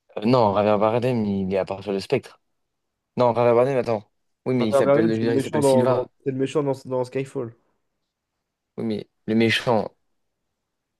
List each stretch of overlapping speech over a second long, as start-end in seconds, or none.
4.6-6.1